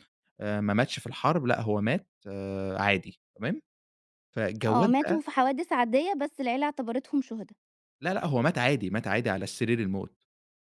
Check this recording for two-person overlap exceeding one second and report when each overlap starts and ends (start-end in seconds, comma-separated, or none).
none